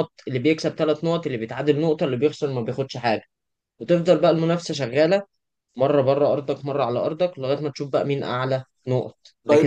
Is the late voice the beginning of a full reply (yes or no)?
yes